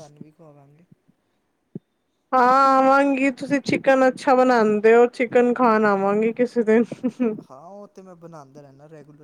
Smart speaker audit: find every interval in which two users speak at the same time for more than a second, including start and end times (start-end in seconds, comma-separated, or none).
none